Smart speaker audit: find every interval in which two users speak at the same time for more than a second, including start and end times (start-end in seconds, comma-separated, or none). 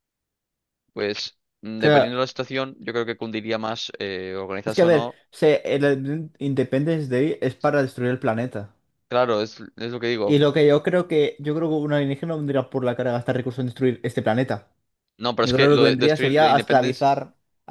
15.4-17.1